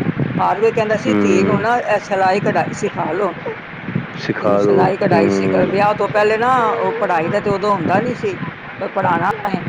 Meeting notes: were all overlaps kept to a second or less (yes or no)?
no